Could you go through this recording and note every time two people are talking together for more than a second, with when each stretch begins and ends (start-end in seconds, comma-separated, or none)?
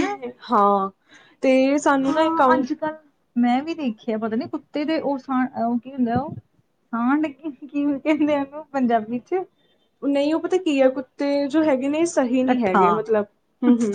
none